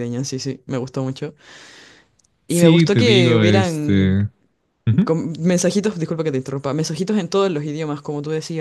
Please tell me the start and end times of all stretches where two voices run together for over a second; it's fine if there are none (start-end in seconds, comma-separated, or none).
2.5-4.2